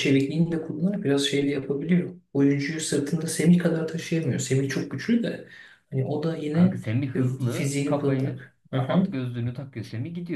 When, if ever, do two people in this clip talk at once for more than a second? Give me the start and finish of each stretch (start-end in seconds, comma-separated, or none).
6.5-9.1